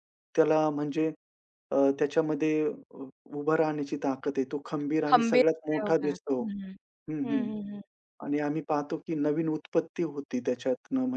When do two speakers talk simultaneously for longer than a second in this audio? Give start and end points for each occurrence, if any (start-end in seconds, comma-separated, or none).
5.1-6.4